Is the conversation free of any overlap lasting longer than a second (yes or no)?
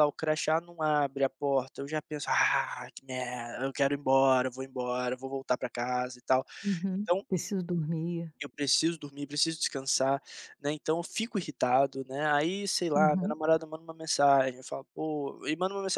yes